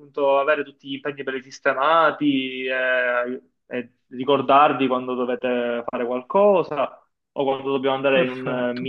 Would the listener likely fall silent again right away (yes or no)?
yes